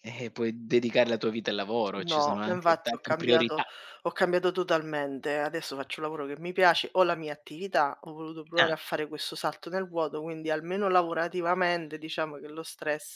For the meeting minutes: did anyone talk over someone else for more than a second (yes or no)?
yes